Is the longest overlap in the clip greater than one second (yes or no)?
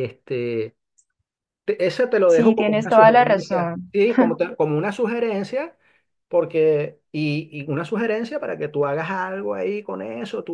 yes